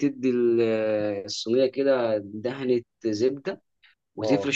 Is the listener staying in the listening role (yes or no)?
yes